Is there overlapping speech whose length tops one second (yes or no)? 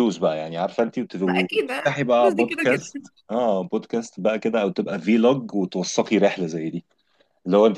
yes